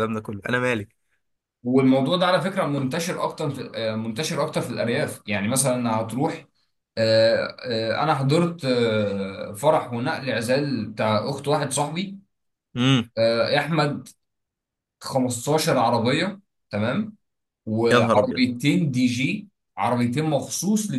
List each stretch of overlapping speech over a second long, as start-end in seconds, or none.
none